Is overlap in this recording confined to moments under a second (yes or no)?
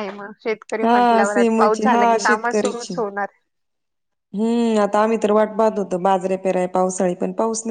no